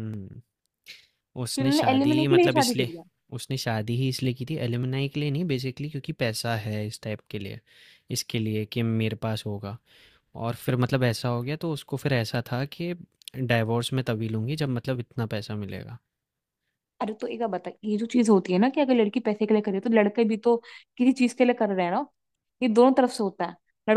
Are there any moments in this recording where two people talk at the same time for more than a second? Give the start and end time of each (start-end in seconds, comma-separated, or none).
1.6-2.9